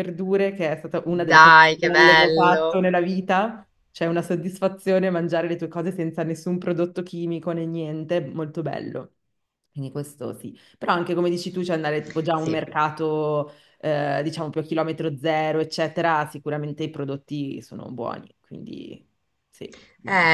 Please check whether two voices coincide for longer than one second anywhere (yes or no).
yes